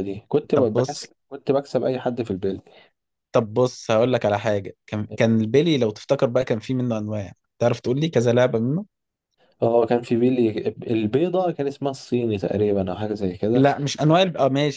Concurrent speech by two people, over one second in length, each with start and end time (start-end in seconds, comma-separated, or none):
none